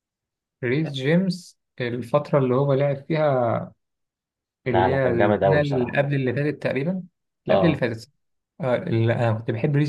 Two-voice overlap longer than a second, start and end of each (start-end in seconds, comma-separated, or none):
4.7-6.0